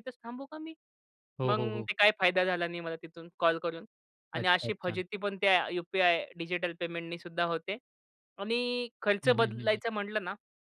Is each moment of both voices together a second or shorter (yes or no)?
yes